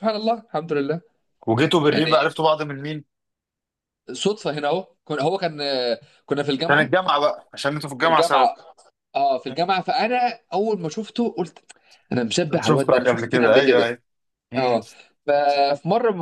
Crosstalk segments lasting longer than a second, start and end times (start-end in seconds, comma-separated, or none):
12.6-13.9